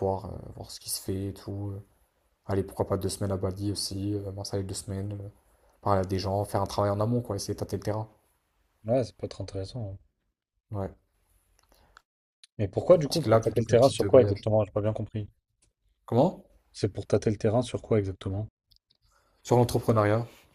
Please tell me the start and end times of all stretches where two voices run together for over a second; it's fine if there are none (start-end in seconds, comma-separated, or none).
13.0-14.5